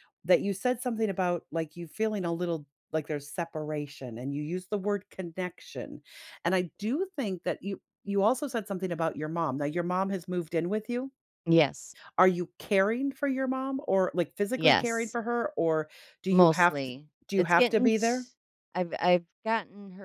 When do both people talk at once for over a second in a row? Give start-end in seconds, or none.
16.3-18.2